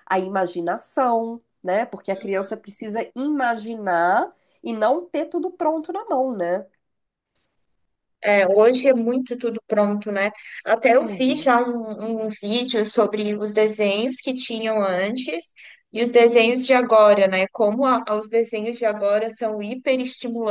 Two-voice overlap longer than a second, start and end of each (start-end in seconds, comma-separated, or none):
none